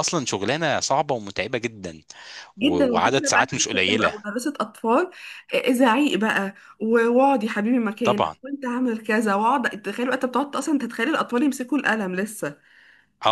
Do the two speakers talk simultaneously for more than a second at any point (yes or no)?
yes